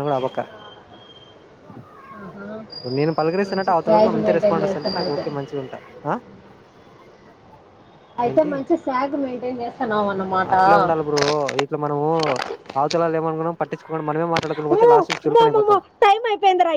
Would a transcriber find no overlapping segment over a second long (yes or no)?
no